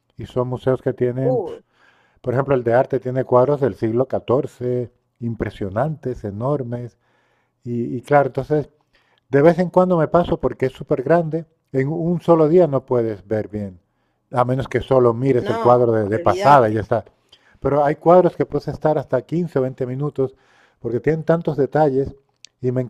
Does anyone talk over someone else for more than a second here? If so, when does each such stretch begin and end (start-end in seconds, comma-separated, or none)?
15.4-16.8